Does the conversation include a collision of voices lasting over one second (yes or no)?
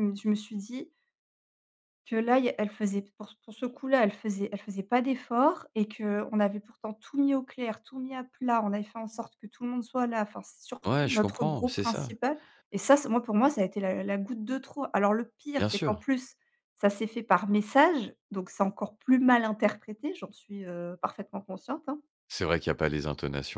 yes